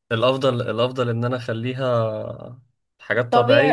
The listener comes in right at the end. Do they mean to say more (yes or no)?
yes